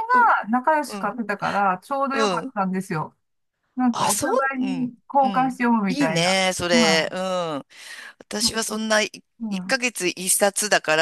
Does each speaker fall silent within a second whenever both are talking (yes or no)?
no